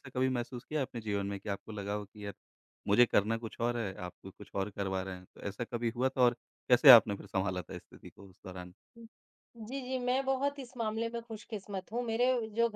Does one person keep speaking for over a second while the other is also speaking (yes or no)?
no